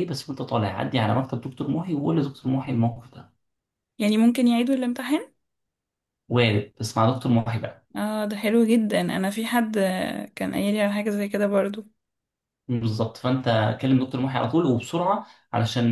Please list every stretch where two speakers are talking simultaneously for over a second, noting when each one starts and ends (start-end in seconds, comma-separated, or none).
none